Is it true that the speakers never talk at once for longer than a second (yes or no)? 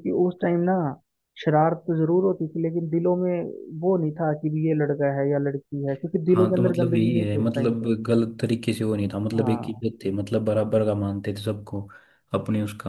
no